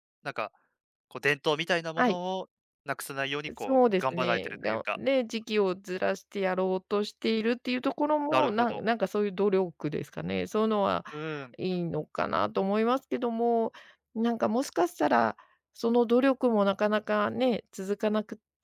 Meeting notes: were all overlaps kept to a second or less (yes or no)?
no